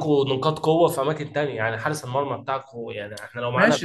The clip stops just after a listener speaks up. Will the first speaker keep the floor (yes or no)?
no